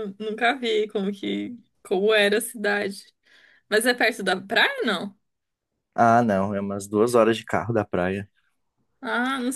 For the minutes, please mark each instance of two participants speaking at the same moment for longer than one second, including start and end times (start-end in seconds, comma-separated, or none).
none